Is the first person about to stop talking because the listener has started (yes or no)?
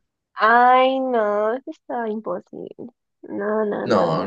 yes